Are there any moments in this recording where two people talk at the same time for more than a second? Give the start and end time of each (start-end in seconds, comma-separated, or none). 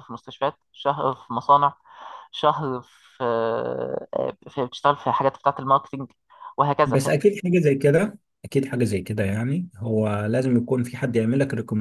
none